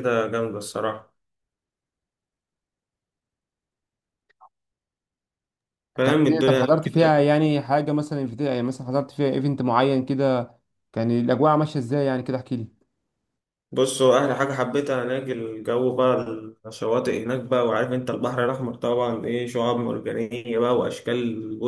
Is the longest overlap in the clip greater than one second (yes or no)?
yes